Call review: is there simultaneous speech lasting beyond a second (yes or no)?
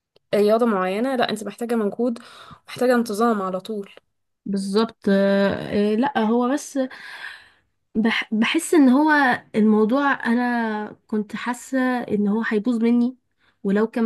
no